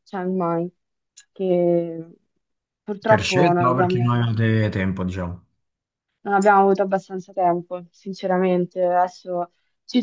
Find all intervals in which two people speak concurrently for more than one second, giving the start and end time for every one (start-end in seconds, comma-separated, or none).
3.0-4.3